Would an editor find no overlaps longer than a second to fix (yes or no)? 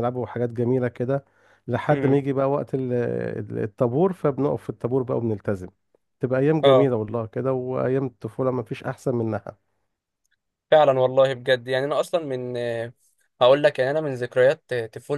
yes